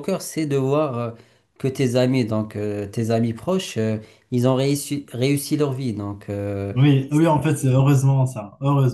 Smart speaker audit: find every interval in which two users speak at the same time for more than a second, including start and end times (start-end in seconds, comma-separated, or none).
none